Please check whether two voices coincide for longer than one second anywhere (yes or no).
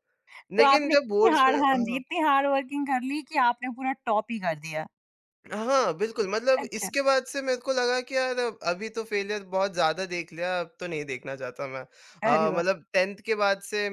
yes